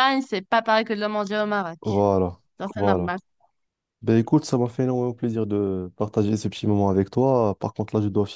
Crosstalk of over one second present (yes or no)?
no